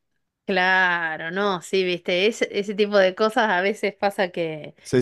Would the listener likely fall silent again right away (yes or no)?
yes